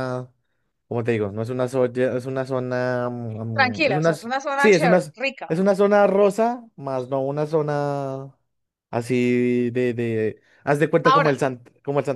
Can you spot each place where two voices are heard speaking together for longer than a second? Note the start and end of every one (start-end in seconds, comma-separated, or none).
3.6-5.1